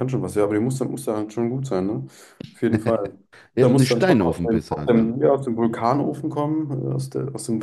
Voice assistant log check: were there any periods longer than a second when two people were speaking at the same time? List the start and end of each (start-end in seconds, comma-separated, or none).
3.6-5.1